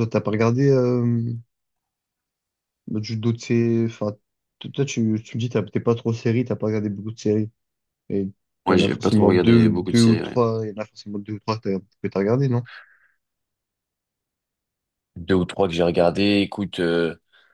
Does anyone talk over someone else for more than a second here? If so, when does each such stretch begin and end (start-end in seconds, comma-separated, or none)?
8.7-10.4